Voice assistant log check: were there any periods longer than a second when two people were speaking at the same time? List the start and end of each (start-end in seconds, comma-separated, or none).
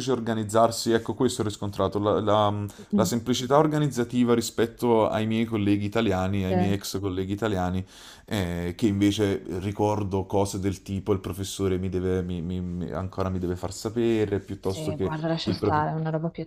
14.6-16.0